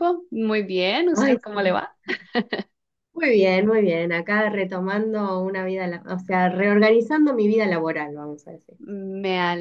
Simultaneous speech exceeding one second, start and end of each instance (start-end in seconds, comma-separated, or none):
none